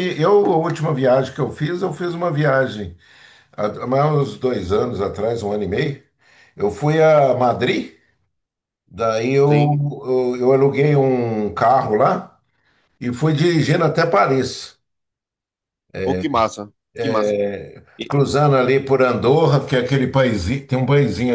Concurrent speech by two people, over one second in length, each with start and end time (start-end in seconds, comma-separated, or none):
none